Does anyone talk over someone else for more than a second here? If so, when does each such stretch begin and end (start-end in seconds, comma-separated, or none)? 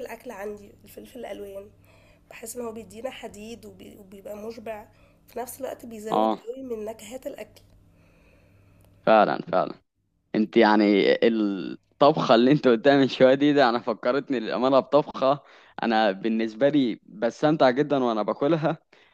none